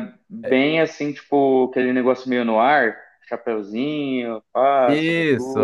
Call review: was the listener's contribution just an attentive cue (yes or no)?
no